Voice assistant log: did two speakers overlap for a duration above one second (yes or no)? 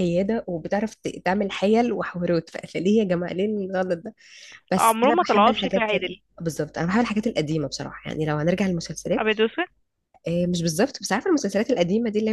yes